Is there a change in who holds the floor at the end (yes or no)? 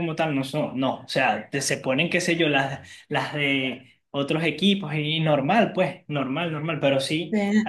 no